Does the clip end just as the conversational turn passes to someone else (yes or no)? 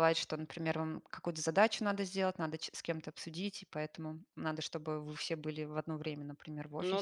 yes